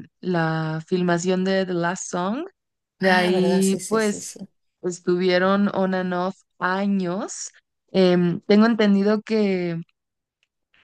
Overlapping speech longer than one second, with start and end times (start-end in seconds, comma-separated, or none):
3.0-4.4